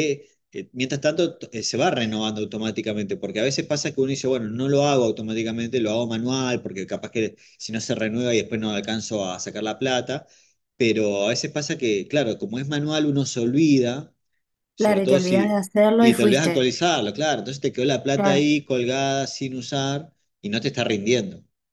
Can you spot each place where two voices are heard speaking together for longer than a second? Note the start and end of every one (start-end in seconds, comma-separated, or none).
14.8-16.7